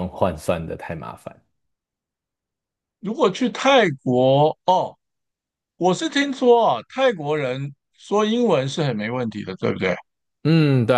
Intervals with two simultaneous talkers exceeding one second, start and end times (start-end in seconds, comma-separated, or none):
none